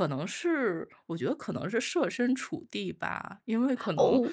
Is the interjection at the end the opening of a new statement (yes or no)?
yes